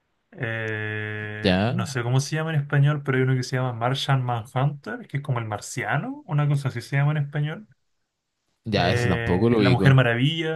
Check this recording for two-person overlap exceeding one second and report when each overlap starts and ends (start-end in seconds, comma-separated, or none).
8.7-9.9